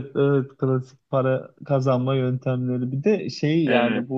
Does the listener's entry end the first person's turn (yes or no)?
no